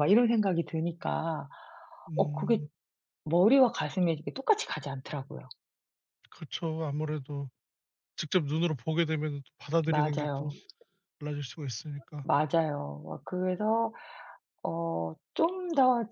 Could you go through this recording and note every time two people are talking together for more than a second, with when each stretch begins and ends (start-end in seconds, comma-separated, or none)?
none